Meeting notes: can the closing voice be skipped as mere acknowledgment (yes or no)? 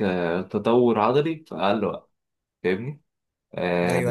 no